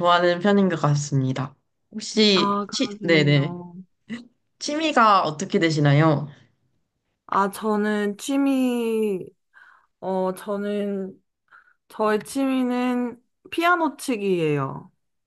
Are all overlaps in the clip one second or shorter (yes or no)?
no